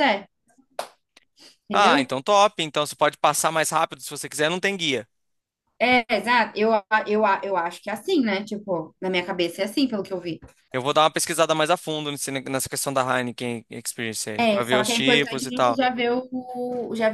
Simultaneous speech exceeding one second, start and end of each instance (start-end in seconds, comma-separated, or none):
14.3-15.8